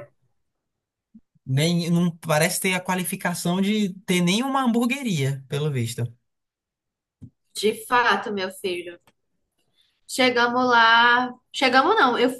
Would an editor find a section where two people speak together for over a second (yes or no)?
no